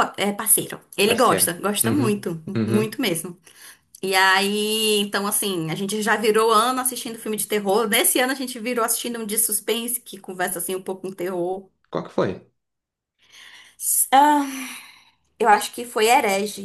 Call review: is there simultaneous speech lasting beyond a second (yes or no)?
yes